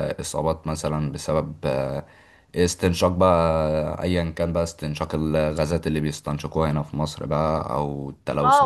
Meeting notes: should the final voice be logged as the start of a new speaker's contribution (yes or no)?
yes